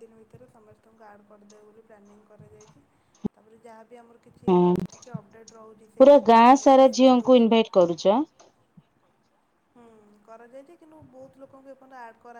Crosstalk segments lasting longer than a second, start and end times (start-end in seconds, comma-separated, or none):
6.0-7.5